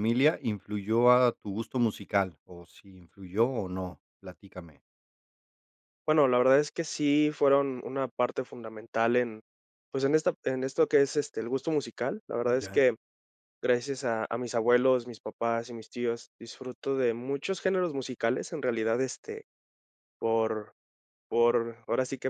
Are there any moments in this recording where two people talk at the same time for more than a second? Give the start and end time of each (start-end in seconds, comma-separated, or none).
none